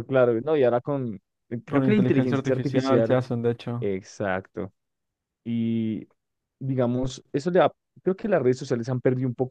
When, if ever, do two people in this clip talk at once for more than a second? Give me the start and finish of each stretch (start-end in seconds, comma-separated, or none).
1.7-3.2